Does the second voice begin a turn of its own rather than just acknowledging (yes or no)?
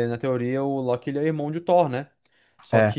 no